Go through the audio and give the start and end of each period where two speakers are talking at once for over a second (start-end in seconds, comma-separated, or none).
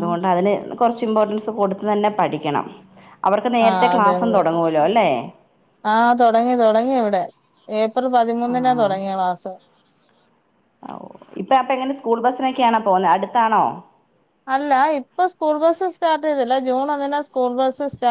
none